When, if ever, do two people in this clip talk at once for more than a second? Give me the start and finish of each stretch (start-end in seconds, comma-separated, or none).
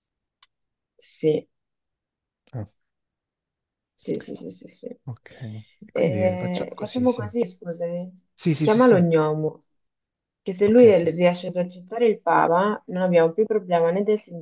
5.9-7.3